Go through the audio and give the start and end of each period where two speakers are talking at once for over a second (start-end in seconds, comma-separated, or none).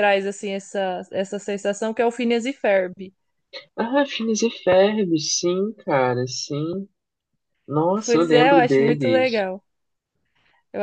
8.1-9.5